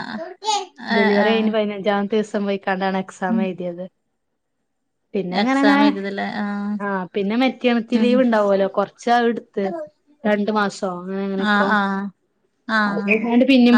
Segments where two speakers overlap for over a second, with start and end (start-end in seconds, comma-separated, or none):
none